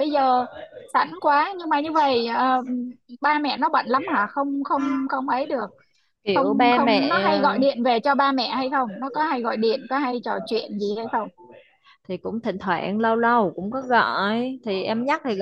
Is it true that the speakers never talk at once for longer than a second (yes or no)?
no